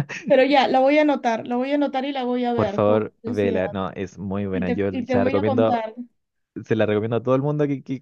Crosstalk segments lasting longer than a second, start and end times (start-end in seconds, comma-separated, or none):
2.5-3.8, 4.5-5.8